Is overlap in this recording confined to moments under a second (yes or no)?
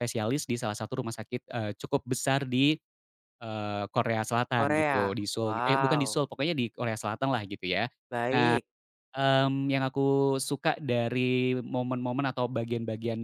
no